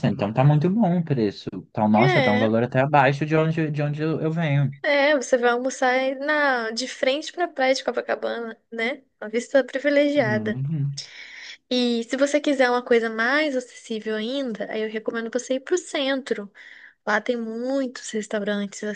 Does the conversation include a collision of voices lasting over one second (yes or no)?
no